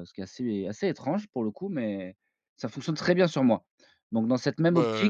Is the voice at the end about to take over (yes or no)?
no